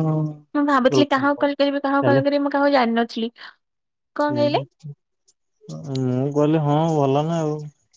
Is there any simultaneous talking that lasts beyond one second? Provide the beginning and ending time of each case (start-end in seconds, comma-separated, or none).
none